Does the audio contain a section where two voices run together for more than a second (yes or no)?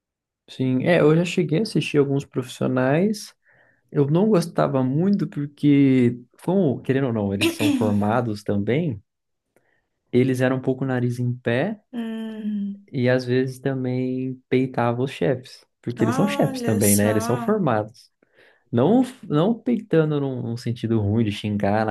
yes